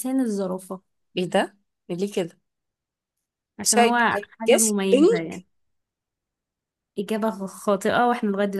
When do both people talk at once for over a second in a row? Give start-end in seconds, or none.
3.6-5.5